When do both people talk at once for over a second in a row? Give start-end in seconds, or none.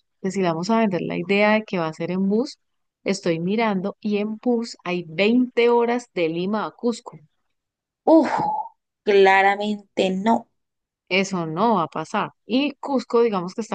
none